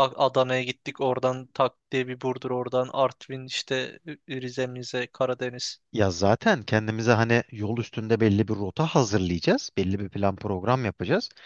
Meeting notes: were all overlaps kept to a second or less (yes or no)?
yes